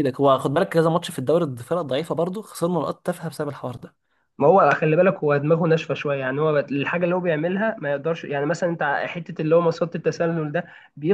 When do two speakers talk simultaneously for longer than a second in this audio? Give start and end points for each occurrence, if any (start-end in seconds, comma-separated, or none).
none